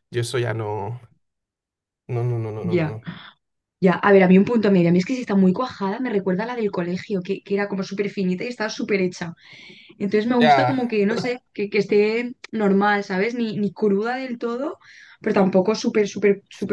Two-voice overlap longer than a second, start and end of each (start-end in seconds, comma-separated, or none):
none